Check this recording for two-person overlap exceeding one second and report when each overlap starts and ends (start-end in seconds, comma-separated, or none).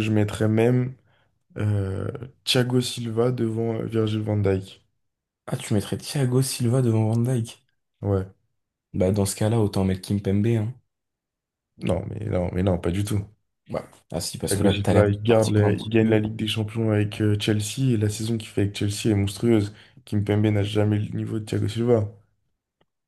14.5-16.2